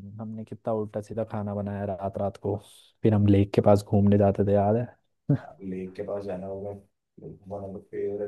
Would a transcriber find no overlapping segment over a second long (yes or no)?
yes